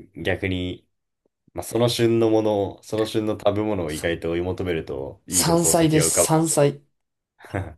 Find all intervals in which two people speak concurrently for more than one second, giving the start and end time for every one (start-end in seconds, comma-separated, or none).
5.3-6.6